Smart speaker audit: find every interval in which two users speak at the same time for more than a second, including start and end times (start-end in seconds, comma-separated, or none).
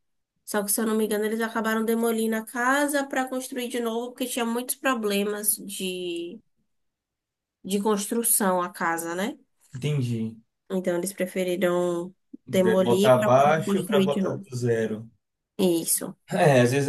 12.6-14.4